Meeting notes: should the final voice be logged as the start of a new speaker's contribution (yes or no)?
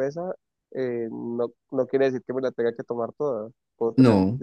no